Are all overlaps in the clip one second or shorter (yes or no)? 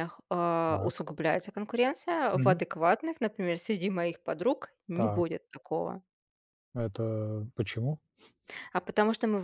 yes